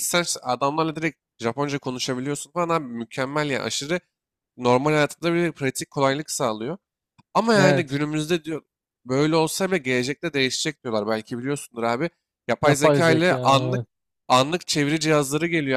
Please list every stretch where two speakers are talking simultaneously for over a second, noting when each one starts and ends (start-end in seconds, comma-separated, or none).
12.6-13.8